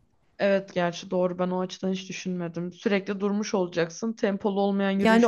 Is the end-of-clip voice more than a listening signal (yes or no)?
yes